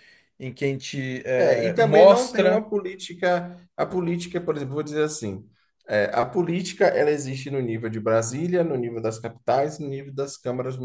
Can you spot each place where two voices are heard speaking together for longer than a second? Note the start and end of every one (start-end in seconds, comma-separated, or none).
1.4-2.7